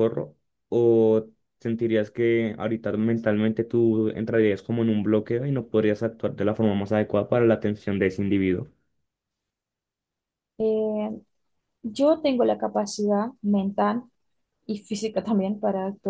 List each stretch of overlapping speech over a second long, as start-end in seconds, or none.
none